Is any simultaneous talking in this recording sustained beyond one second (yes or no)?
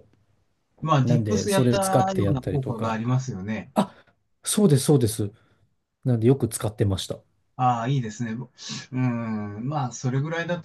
yes